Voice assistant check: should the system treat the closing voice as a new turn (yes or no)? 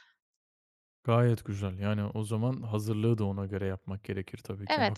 yes